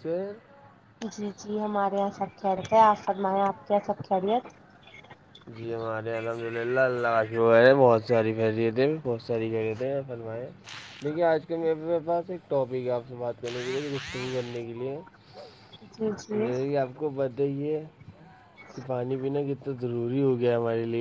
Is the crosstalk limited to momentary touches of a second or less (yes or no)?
yes